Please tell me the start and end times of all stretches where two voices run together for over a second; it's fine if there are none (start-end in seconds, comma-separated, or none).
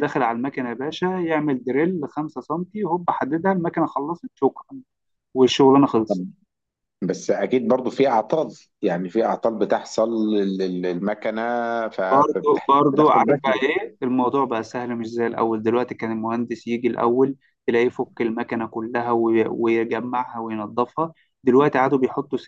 12.1-13.6